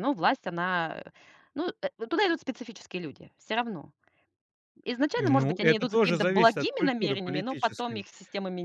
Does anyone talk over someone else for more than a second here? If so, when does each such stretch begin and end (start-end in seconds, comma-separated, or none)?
5.2-8.1